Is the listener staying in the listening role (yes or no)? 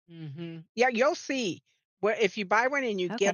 no